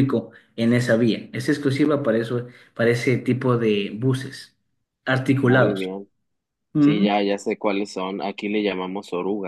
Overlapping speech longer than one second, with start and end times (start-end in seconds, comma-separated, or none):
none